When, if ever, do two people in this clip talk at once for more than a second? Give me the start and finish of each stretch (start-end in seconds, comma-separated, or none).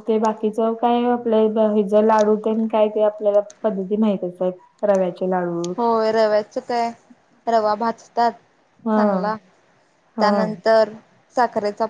none